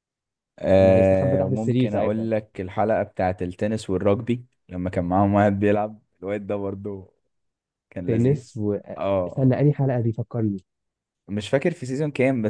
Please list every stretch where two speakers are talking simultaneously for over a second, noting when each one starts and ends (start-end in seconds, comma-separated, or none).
0.7-2.3